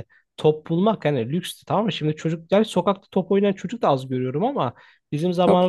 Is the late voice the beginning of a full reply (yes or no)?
no